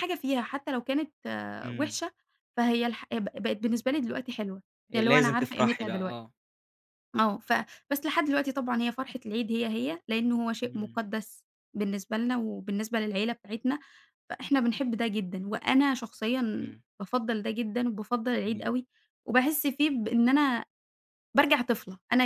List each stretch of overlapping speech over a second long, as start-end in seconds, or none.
4.9-6.2